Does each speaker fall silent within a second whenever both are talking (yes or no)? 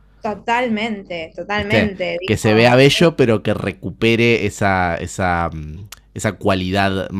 no